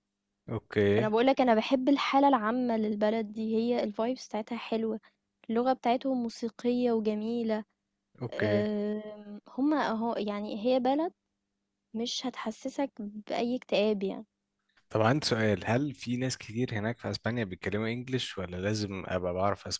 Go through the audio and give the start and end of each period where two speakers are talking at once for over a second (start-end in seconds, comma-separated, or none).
none